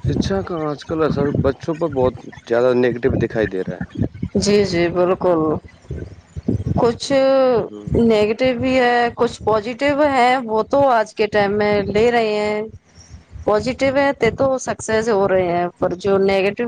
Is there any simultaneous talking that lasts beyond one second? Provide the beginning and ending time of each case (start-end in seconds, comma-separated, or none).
none